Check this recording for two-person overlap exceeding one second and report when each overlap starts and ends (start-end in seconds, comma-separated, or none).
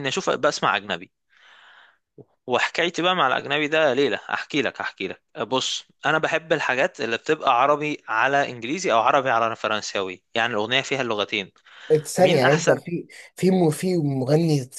none